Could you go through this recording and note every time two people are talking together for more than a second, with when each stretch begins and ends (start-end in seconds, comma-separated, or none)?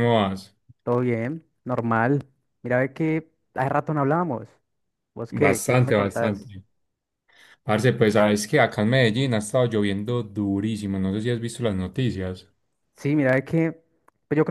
5.3-6.5